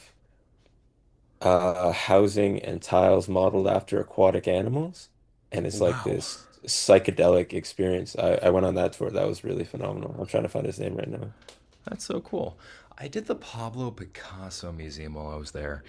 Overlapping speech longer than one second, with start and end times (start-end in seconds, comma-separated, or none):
none